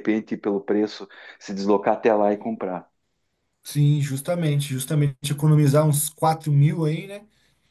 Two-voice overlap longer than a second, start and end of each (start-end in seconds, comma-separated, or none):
none